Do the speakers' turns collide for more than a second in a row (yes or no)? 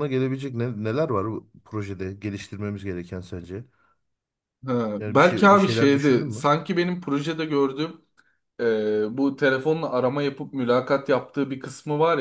yes